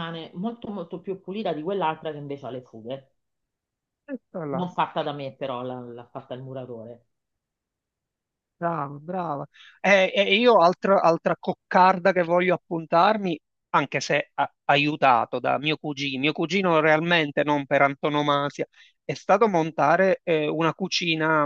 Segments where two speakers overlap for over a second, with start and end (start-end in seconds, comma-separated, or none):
none